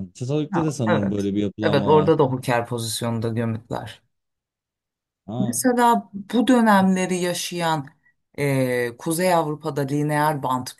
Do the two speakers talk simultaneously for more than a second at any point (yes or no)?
yes